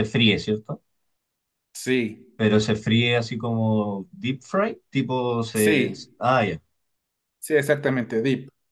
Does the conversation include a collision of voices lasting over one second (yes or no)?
no